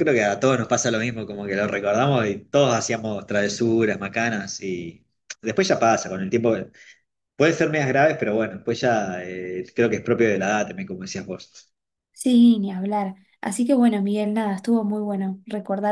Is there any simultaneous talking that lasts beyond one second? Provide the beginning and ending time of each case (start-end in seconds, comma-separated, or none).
none